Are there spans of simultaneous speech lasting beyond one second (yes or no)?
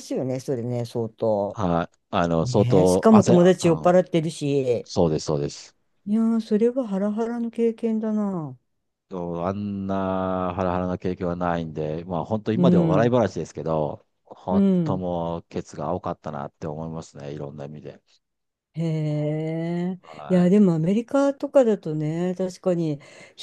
yes